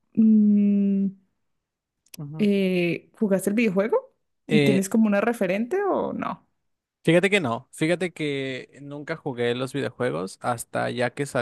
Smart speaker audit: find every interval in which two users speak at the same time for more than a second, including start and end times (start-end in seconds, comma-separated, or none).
none